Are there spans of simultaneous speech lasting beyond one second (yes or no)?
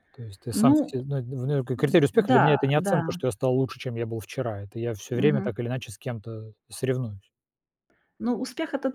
yes